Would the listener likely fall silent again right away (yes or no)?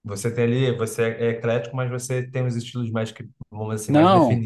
no